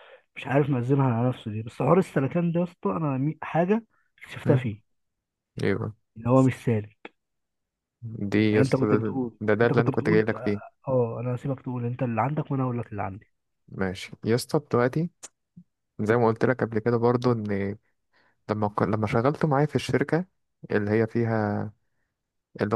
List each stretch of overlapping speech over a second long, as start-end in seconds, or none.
8.5-10.2